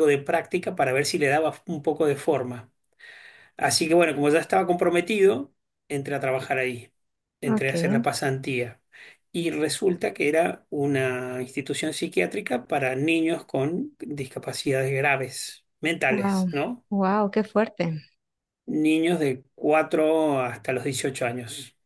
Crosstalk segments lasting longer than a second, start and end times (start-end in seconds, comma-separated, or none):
none